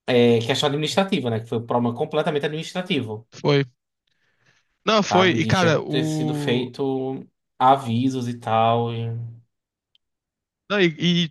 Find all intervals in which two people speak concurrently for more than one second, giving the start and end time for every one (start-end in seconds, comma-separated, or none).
5.1-6.7